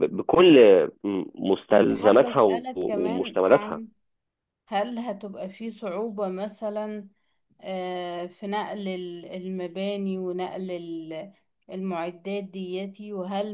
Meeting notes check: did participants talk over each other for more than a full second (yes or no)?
yes